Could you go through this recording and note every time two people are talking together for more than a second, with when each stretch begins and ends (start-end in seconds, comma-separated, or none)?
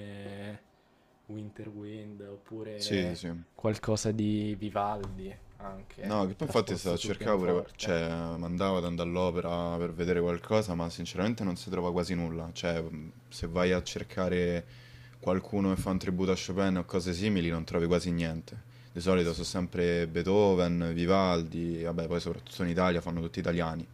6.0-8.0